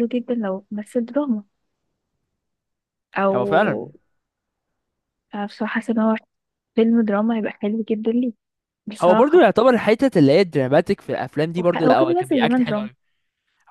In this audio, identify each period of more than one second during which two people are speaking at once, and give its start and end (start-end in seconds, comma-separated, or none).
11.6-12.9